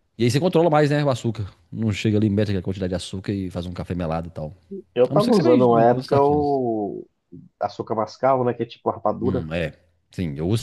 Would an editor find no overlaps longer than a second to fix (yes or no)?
no